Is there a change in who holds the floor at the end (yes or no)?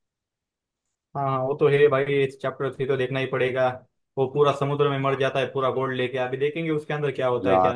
yes